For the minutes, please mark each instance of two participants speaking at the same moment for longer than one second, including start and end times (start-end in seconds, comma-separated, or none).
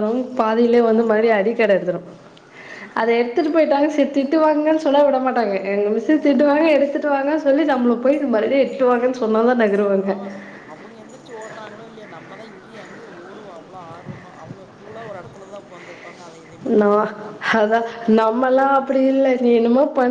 none